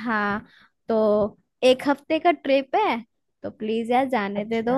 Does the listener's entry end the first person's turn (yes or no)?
no